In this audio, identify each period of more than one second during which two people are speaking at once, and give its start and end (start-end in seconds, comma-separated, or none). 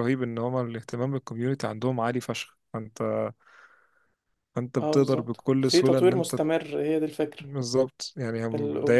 4.8-6.4